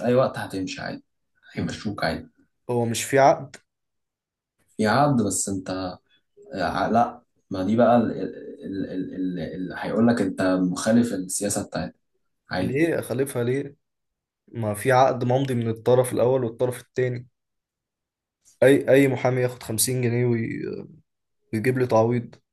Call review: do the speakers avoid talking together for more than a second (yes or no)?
yes